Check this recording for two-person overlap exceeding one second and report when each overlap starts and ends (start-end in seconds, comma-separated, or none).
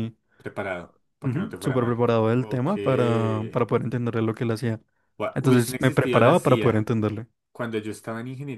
1.2-2.7, 5.3-6.9